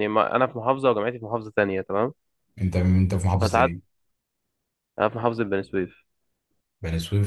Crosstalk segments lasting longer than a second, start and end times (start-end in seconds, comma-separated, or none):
none